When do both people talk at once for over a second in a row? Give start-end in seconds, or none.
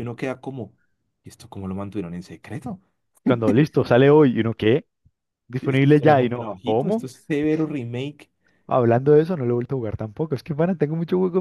5.6-7.0